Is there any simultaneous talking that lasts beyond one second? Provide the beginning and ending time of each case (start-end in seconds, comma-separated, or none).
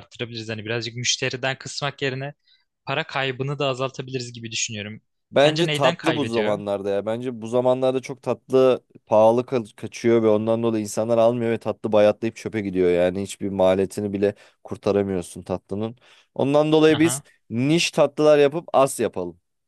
5.4-6.6